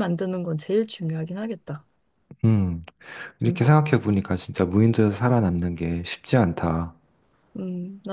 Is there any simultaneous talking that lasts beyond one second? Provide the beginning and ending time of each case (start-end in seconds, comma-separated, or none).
none